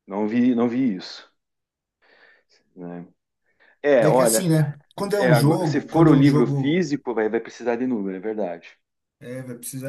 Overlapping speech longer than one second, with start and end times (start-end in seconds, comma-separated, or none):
5.1-6.8